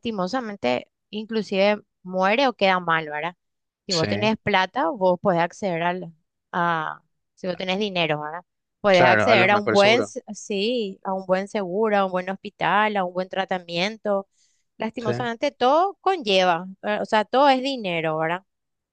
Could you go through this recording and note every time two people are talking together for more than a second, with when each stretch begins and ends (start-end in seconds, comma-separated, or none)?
8.9-10.1